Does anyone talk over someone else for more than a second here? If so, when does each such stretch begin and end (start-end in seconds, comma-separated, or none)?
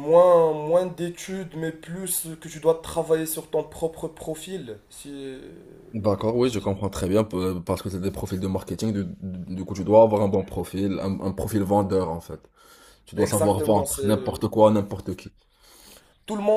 13.2-14.4